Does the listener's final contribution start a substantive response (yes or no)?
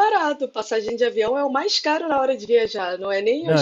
no